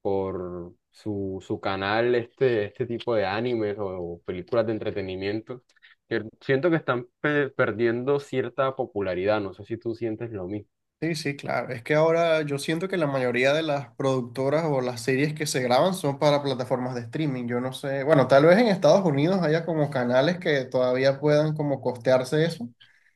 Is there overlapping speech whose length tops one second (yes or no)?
no